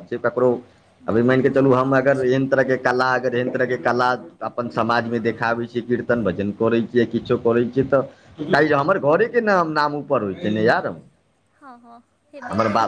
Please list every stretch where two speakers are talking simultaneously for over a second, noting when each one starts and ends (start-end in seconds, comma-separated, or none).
1.1-2.3